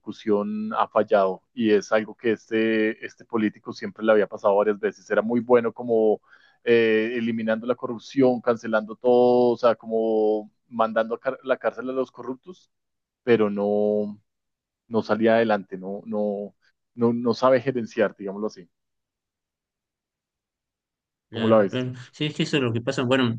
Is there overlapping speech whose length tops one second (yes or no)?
no